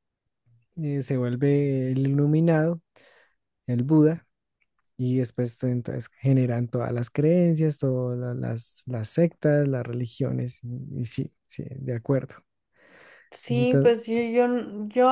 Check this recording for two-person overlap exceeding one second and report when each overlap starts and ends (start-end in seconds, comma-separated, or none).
none